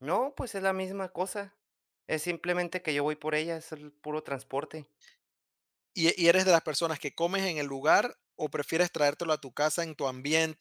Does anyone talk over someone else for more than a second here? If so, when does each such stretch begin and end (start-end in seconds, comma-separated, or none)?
none